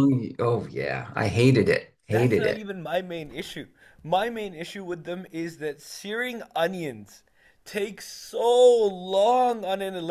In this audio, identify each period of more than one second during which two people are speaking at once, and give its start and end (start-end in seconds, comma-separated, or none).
none